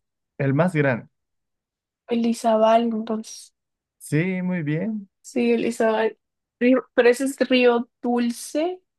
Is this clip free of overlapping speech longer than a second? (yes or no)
yes